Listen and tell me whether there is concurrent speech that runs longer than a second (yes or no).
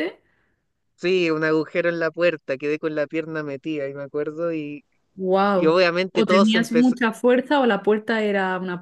yes